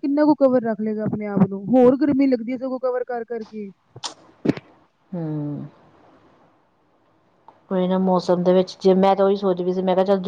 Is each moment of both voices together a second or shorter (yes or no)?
yes